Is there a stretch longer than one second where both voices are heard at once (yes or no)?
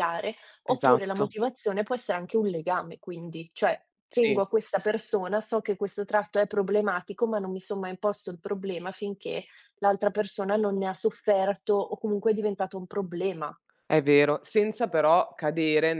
no